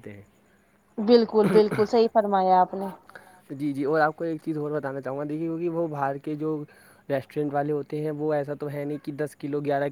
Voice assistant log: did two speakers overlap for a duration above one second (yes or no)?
no